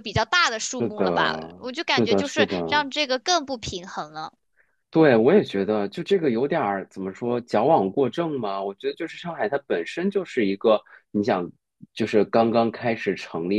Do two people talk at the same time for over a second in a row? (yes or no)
yes